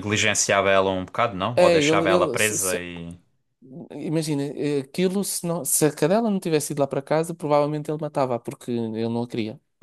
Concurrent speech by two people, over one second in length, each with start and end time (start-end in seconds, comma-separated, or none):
1.5-2.8